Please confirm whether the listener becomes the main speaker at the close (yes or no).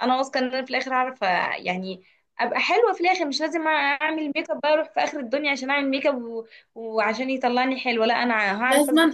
yes